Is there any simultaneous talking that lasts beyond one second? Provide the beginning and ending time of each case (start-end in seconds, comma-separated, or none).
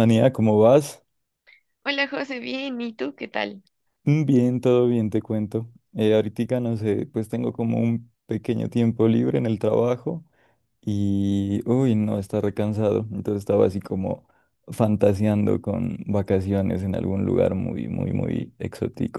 none